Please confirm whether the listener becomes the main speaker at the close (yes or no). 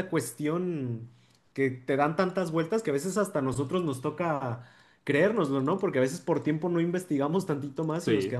no